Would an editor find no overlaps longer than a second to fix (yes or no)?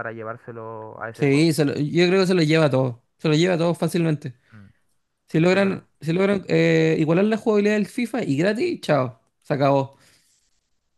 yes